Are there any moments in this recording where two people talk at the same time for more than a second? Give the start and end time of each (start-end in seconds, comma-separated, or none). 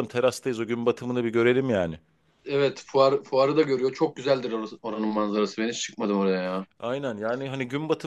none